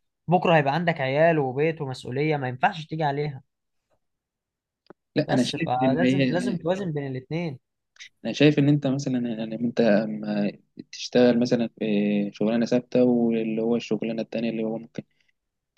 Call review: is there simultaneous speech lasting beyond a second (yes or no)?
yes